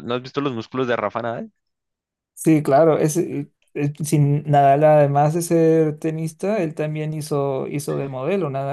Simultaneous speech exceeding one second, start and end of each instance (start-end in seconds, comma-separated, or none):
none